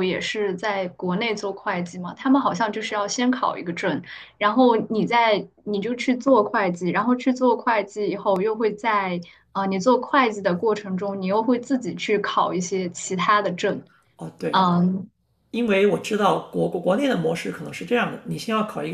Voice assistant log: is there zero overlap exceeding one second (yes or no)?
yes